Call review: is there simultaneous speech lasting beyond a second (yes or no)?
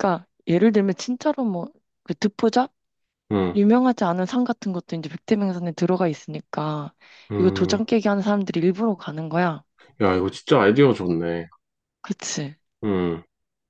no